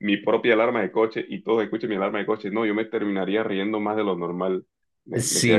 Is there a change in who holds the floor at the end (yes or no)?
yes